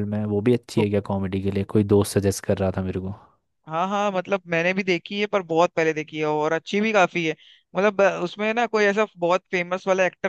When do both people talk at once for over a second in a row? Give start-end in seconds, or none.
none